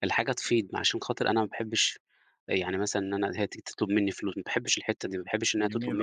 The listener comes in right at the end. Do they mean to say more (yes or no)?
yes